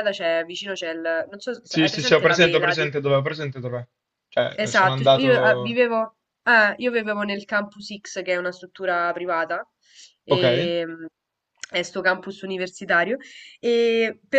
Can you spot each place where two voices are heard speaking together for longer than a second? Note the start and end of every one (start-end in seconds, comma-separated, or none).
1.7-2.9, 4.5-5.8